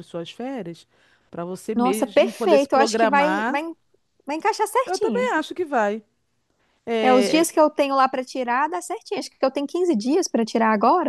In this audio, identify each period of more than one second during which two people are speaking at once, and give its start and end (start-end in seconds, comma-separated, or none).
1.7-3.6